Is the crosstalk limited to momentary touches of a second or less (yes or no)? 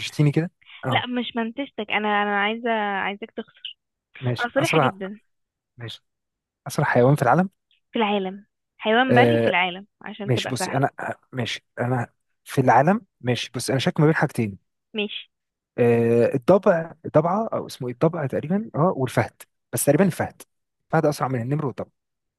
yes